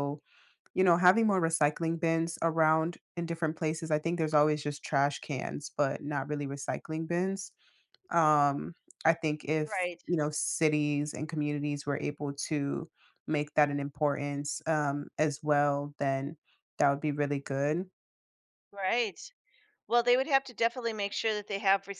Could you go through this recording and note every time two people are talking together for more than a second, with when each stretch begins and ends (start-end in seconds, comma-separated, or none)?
none